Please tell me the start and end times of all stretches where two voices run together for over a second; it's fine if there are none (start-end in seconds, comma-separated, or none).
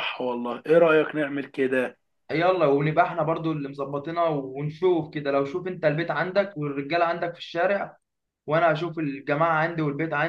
none